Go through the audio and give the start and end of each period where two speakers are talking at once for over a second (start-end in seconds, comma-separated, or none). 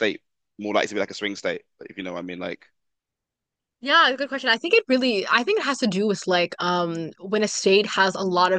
none